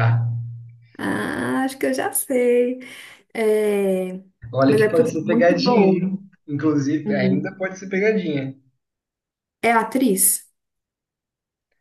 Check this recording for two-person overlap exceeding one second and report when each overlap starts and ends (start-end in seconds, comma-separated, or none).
4.7-6.2